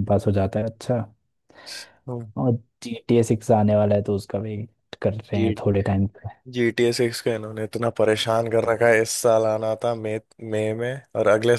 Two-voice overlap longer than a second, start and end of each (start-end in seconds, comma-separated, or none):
none